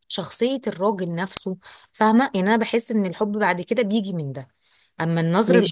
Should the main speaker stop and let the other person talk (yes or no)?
yes